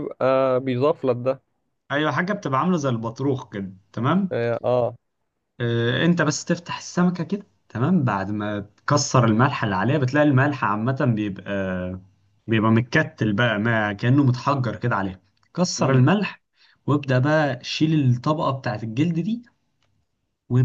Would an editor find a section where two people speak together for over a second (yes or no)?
no